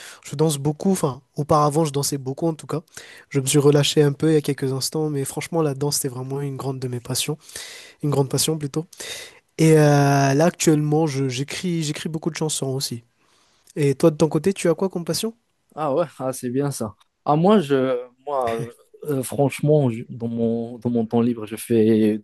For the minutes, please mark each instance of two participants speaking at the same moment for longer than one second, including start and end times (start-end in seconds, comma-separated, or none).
none